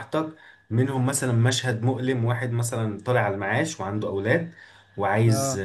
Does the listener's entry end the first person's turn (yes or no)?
no